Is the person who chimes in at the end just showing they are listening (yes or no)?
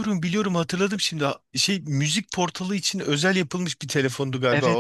no